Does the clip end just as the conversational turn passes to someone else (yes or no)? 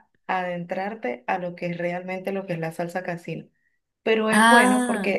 no